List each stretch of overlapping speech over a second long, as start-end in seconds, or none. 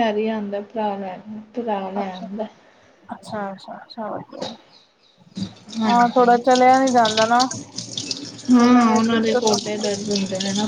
8.6-9.9